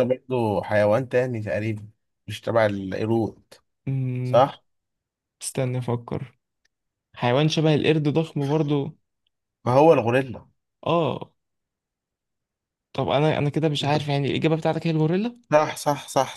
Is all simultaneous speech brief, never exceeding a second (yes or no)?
yes